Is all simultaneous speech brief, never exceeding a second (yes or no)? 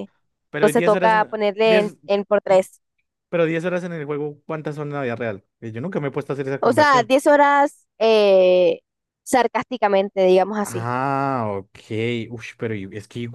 no